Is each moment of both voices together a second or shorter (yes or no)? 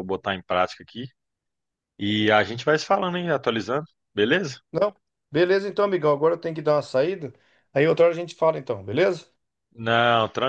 yes